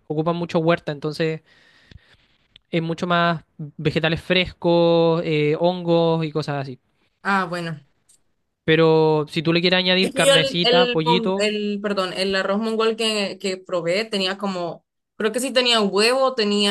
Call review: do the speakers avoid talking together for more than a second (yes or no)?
no